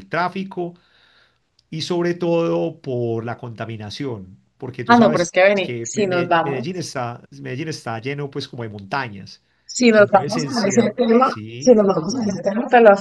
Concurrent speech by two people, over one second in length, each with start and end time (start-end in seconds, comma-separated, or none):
4.9-6.9, 9.9-12.4